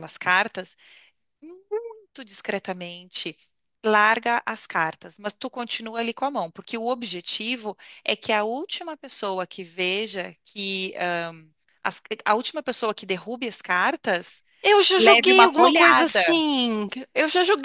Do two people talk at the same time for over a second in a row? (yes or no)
yes